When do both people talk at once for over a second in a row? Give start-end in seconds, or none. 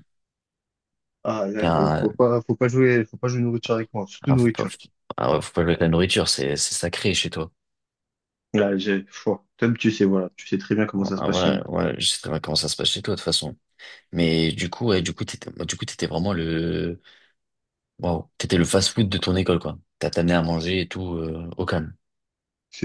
none